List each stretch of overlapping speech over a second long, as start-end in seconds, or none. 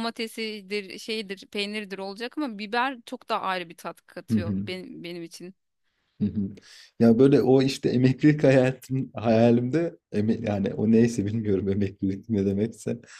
none